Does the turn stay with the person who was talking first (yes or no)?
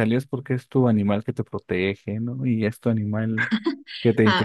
no